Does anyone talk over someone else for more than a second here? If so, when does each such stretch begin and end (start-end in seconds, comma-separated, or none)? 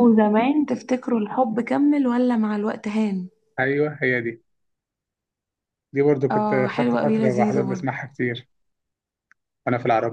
6.3-7.9